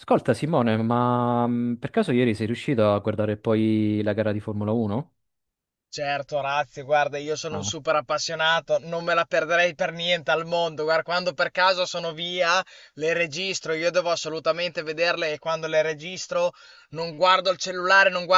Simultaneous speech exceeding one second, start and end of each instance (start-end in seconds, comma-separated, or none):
none